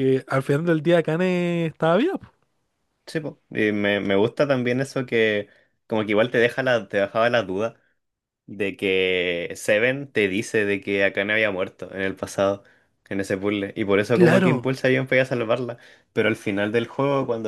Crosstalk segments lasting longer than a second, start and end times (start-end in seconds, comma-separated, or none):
none